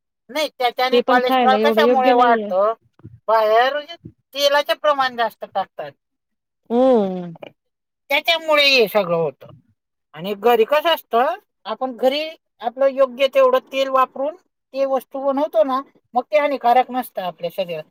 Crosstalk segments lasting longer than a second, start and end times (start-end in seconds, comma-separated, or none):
0.9-2.5